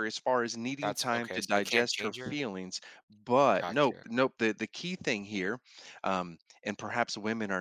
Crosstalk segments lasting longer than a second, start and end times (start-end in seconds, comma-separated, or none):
0.8-2.4